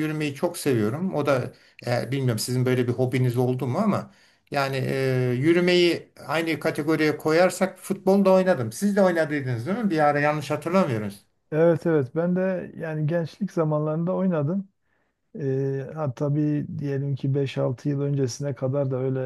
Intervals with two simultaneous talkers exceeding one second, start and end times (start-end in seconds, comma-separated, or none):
none